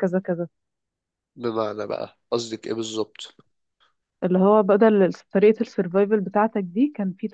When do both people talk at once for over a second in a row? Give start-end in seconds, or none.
none